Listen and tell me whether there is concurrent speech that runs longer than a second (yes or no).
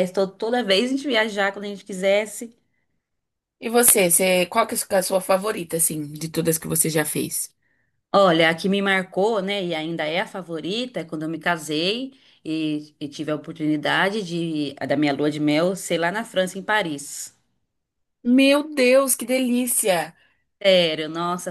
no